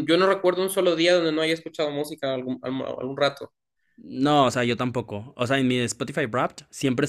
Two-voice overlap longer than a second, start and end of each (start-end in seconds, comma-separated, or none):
none